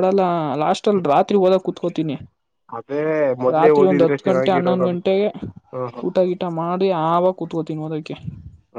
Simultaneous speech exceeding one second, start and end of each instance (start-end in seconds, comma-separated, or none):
3.5-5.0